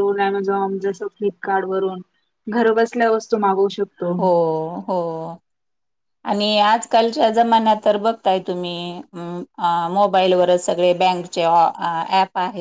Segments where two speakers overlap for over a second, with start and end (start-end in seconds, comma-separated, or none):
none